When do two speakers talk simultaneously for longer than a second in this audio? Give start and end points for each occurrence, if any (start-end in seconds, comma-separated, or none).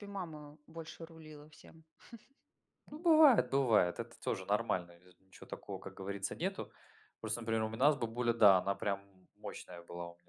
none